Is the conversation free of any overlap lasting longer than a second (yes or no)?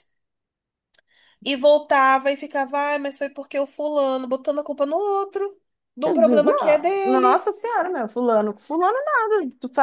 no